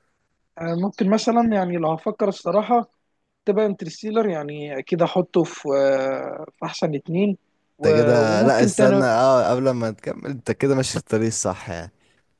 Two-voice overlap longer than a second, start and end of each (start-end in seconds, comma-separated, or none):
7.8-9.1